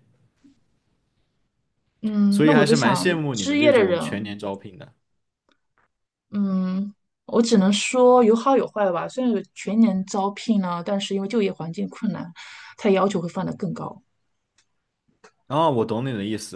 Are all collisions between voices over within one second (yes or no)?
no